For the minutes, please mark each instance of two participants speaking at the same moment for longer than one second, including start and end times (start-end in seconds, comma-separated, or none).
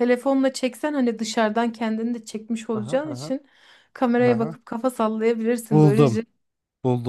none